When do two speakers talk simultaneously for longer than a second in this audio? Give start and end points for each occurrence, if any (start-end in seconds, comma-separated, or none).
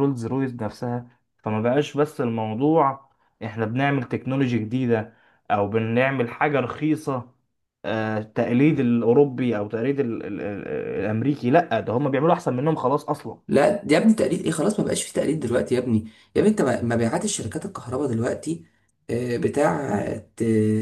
none